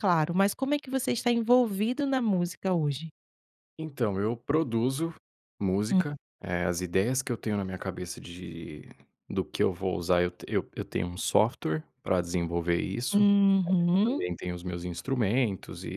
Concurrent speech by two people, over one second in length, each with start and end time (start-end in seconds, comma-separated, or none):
none